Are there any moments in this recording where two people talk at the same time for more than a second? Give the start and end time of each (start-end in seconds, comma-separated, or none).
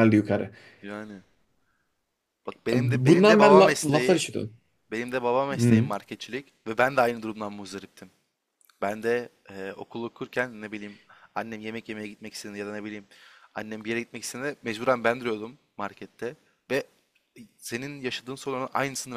2.7-4.2